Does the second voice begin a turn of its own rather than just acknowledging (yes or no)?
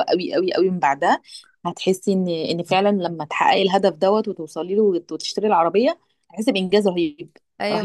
yes